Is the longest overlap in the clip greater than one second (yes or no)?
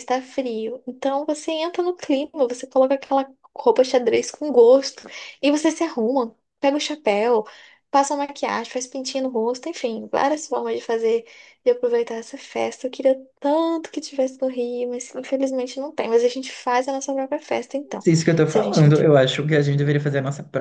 no